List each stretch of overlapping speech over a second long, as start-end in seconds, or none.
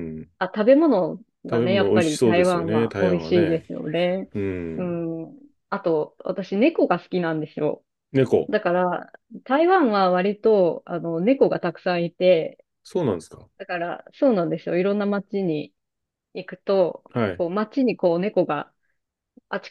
1.5-3.7